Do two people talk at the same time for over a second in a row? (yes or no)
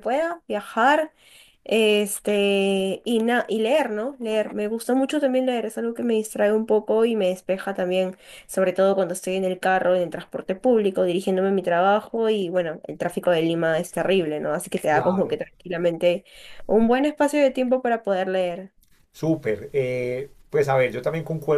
no